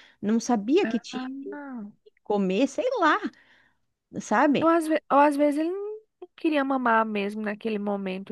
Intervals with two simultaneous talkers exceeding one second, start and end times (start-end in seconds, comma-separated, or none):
none